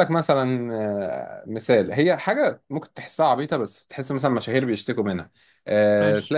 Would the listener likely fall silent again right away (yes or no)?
yes